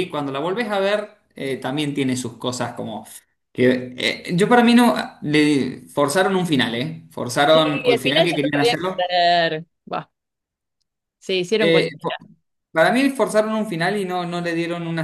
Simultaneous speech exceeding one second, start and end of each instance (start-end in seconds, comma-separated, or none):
7.5-9.2